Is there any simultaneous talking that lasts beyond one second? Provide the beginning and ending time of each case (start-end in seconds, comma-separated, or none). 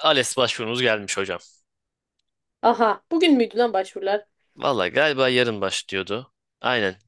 none